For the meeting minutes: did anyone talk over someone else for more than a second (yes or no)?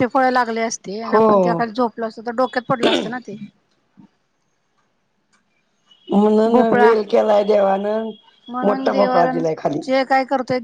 no